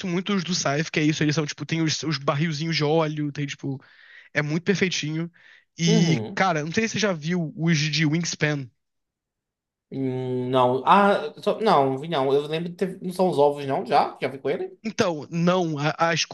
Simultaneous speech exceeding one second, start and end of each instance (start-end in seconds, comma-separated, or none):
none